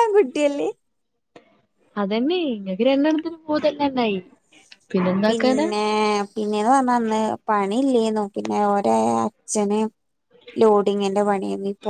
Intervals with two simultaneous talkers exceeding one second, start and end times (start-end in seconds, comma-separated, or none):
none